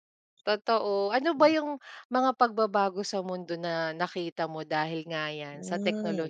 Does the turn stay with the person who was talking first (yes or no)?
no